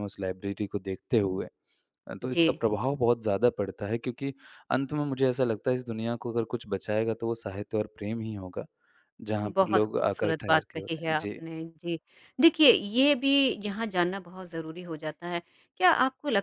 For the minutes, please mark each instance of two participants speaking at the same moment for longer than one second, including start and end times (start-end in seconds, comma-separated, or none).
9.6-11.4